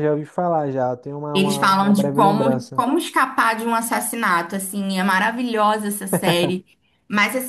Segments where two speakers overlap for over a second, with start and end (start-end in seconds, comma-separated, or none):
1.3-2.8